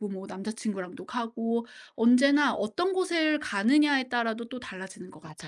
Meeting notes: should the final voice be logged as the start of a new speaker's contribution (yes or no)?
yes